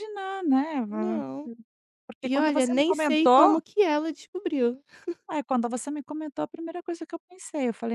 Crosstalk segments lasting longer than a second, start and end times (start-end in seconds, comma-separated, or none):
2.2-3.6